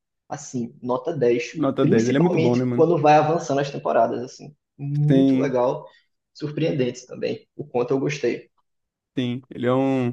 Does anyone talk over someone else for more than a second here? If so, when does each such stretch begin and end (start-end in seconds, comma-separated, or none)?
1.5-2.9